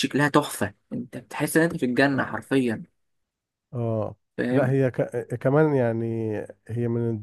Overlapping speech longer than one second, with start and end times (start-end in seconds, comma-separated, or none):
none